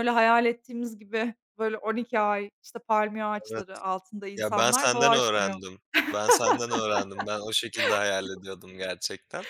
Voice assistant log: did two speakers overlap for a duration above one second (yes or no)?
yes